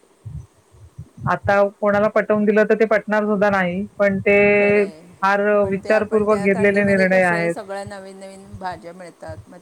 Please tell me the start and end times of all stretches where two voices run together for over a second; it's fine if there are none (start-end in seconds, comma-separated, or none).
5.6-7.5